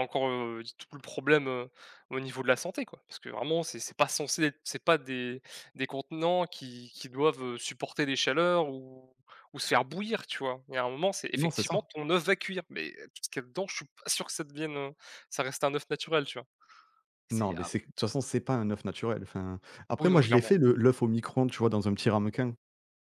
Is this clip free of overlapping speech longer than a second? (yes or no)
yes